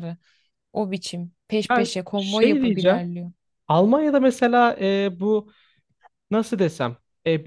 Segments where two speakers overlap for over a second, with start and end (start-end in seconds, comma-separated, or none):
1.7-3.0